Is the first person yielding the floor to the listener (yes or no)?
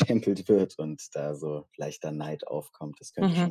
yes